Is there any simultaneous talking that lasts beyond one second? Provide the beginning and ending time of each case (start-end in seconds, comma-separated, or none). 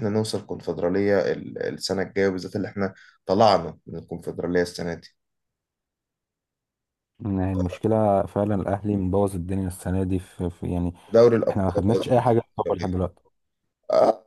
11.5-13.0